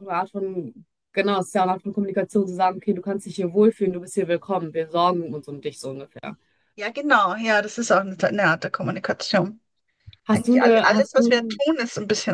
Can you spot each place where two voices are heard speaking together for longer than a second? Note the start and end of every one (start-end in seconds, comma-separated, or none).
10.3-11.6